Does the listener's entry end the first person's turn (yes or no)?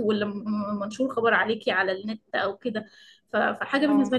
no